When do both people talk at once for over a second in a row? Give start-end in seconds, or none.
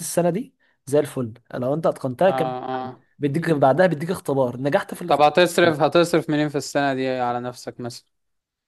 none